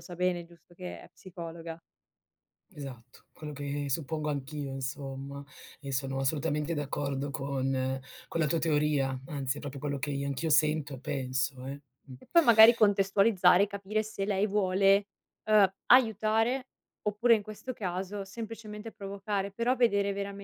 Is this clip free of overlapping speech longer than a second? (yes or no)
yes